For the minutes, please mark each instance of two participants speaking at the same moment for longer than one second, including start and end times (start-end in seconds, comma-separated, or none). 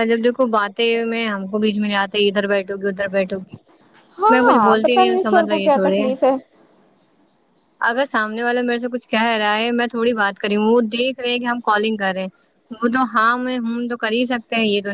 4.3-6.1